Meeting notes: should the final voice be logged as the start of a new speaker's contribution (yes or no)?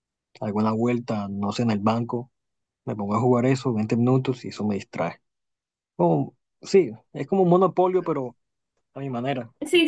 yes